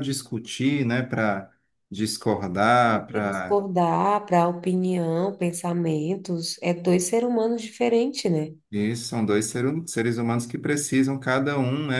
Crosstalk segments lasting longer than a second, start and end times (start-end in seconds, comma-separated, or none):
none